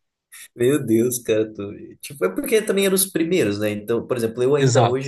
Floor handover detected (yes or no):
no